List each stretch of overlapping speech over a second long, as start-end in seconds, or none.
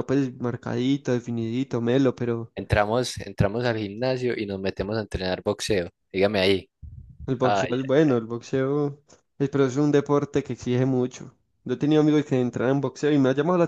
none